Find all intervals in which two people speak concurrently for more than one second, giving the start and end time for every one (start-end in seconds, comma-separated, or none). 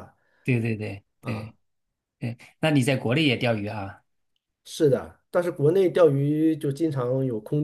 none